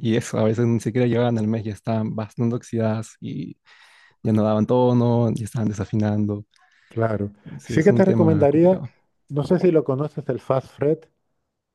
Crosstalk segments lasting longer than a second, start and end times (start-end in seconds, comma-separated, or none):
7.6-8.8